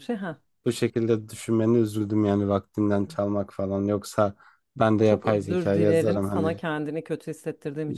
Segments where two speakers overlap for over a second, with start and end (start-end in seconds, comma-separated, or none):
5.0-6.6